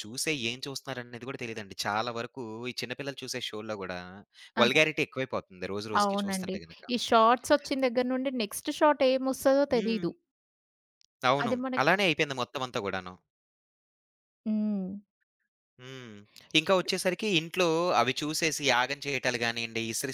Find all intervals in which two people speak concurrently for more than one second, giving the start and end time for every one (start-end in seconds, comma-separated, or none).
none